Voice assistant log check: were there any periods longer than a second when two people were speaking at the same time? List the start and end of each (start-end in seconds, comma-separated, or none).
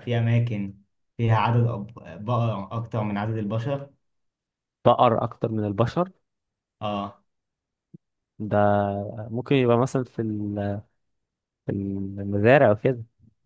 none